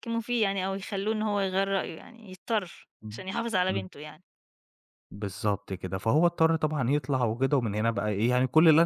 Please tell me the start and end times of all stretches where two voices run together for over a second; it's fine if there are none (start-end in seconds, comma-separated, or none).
none